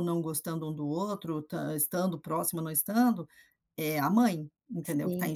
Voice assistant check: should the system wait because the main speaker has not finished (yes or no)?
no